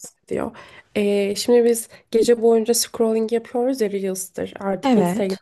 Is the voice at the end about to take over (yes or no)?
no